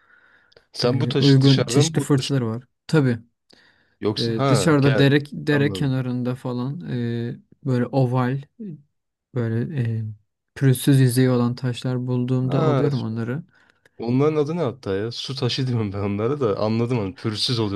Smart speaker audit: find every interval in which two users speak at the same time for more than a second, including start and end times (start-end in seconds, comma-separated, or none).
0.8-2.4, 4.2-5.9